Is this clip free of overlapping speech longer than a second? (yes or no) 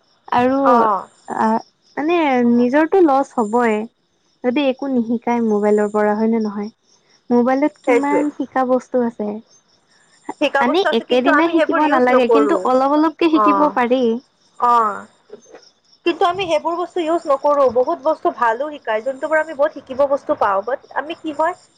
no